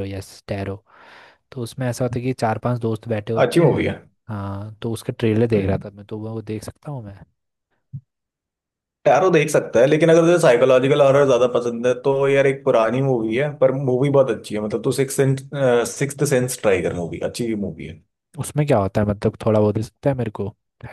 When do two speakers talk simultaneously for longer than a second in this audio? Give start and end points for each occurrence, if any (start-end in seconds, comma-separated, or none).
none